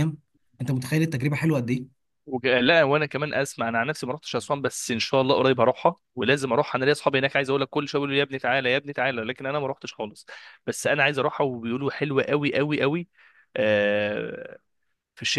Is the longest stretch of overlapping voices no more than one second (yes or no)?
yes